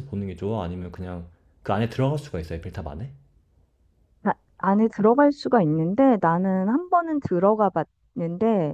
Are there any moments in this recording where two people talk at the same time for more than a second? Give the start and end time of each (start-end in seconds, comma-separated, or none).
none